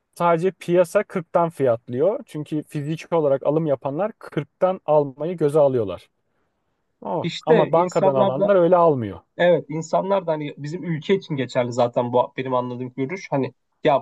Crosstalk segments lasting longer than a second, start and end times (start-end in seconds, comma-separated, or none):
7.2-8.5